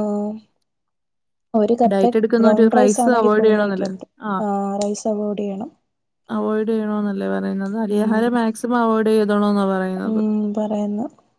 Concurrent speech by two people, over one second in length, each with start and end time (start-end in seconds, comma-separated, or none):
1.9-3.9